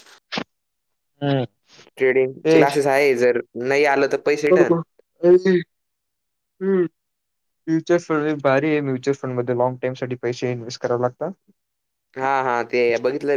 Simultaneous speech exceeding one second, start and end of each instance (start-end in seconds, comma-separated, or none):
none